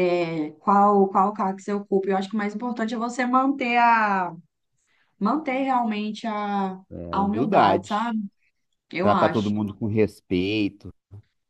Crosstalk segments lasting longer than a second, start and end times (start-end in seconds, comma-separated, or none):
6.9-8.2